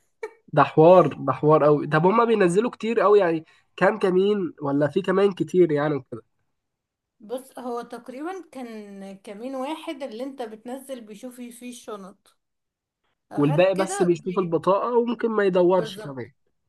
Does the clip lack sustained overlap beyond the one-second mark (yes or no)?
no